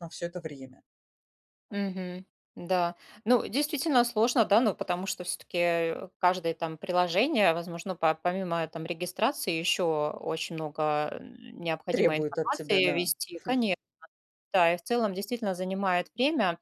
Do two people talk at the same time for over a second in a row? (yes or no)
yes